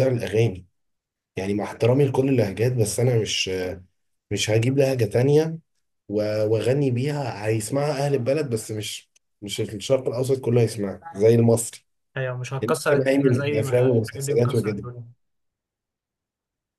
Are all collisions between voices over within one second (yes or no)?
no